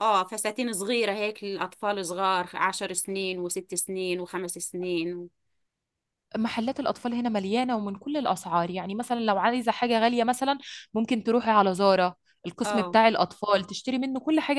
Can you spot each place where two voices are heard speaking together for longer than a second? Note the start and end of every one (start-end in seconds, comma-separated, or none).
none